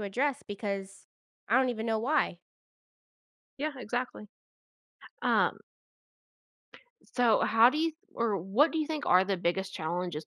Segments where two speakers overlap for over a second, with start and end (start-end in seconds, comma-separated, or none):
none